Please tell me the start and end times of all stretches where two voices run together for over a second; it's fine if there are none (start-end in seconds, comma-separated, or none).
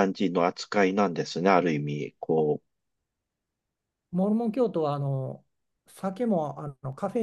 none